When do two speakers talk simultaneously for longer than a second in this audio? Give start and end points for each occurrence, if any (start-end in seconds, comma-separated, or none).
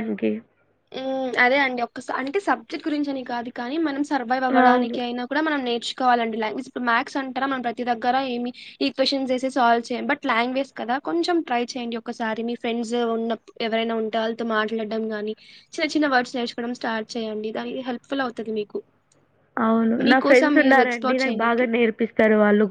20.1-21.6